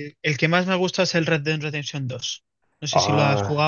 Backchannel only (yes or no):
no